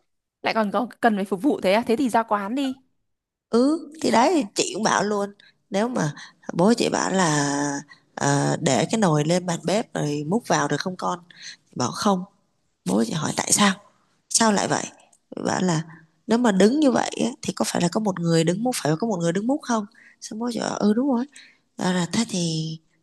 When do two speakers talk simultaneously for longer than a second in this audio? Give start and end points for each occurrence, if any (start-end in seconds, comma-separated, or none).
none